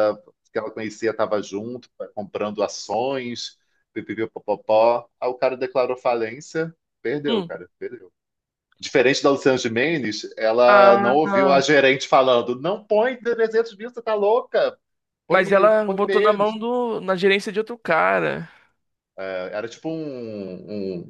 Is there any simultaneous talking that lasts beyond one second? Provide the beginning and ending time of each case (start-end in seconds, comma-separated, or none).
15.3-16.6